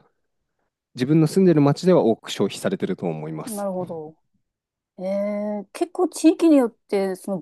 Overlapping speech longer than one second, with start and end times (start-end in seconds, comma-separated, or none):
none